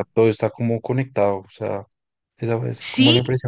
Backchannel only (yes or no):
no